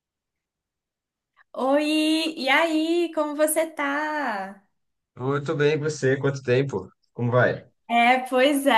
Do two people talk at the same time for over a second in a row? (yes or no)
no